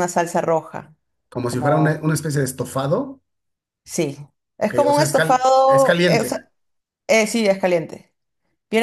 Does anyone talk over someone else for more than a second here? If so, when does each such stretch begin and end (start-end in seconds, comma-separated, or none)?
4.7-6.4